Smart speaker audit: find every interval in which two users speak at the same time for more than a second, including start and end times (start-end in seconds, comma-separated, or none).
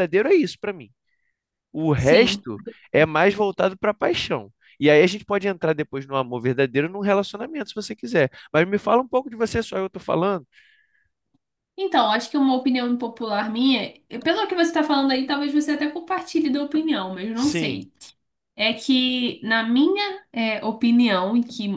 none